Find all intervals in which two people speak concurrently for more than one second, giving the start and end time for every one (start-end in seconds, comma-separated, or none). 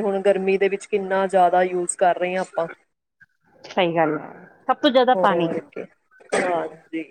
none